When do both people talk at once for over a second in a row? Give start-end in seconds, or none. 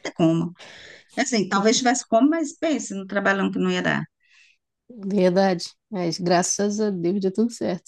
none